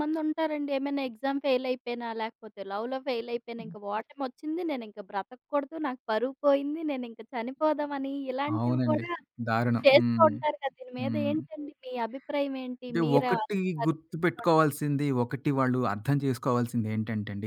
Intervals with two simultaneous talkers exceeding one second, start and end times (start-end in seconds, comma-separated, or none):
12.9-14.7